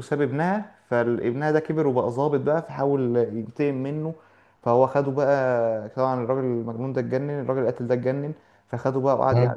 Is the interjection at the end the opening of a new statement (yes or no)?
no